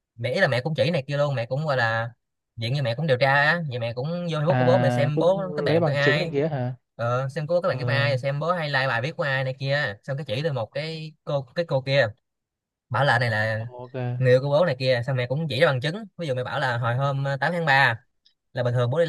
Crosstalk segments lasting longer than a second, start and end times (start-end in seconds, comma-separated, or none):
4.5-6.3